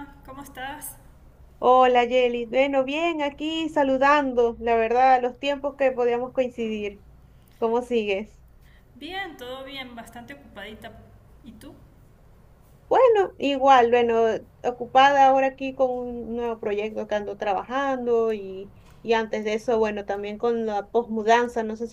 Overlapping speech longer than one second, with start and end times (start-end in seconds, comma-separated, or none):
none